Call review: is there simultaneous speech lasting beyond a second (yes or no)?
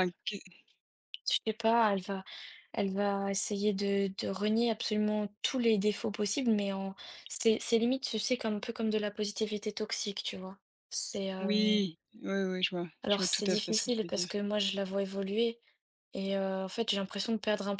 yes